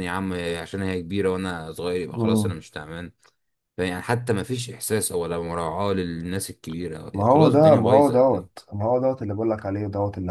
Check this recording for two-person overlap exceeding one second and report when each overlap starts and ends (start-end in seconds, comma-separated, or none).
7.1-8.5